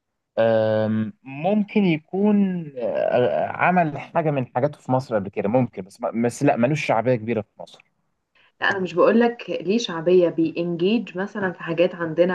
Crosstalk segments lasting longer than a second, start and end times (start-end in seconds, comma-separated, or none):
none